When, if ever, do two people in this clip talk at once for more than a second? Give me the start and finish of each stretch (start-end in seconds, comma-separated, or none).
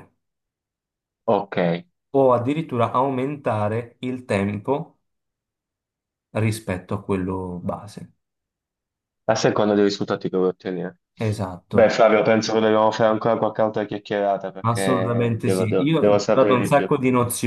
14.6-16.9